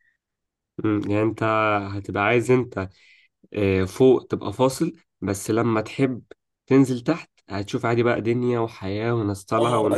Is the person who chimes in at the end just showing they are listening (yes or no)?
no